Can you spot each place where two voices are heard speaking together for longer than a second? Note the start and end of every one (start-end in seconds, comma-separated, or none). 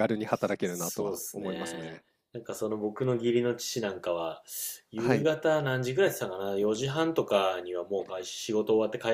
0.6-2.0